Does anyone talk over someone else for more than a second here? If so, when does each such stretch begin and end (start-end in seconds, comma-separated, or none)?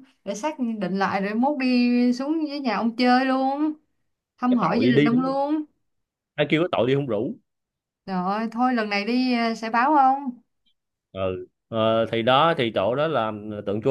none